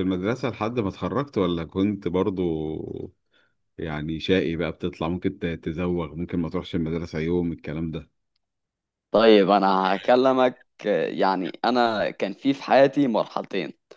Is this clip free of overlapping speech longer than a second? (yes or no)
yes